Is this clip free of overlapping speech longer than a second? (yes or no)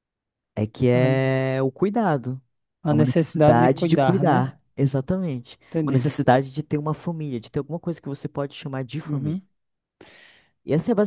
no